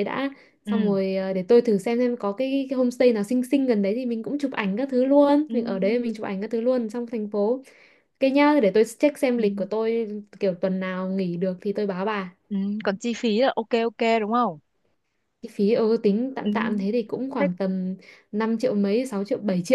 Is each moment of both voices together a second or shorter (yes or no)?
yes